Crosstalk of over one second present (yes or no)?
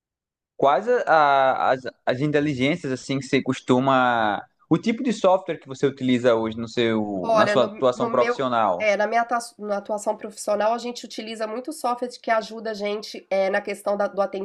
yes